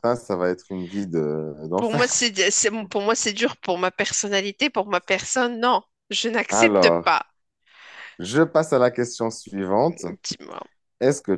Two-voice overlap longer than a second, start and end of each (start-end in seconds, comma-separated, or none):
none